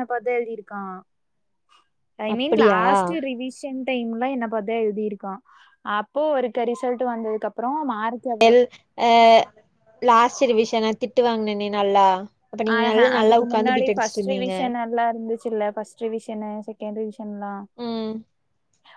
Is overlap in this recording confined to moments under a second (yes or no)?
no